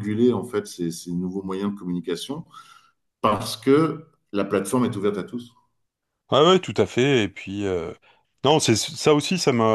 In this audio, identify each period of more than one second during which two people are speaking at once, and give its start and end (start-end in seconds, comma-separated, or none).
none